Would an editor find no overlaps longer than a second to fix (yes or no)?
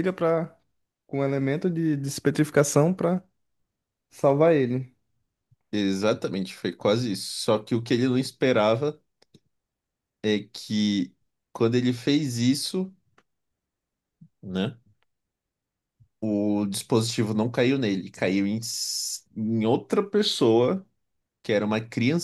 yes